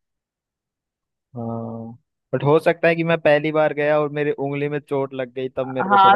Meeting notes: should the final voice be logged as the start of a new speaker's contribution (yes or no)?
yes